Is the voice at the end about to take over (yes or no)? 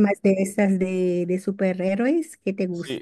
yes